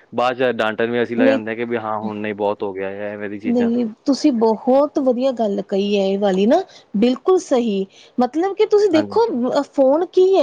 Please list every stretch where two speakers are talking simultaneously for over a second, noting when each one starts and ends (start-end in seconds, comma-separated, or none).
none